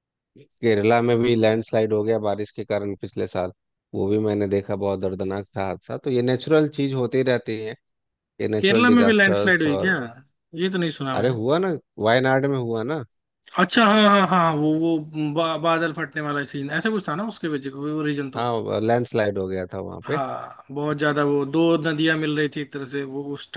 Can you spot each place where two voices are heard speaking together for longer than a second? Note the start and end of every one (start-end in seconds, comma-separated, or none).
8.6-9.9